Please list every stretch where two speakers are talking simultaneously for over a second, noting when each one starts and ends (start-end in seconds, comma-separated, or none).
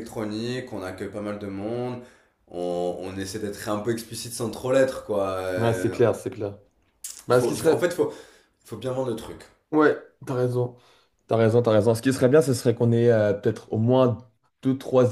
none